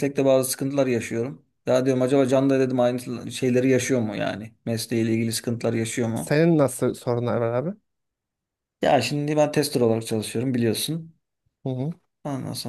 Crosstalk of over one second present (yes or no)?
no